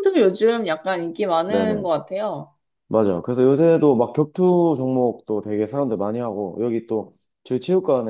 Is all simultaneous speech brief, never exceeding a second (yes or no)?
yes